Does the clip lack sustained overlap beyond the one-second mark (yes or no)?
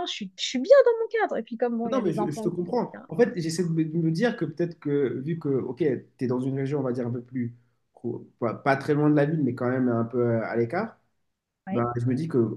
no